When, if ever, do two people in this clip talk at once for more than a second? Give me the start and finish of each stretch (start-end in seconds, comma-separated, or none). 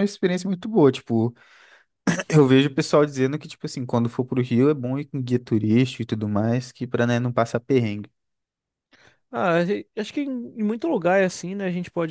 none